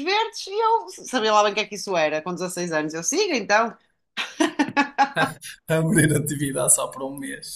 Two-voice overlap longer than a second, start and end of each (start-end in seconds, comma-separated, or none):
none